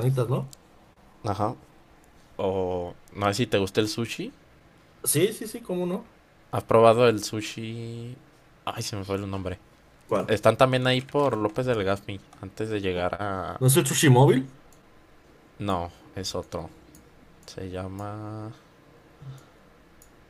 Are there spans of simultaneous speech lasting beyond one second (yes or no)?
no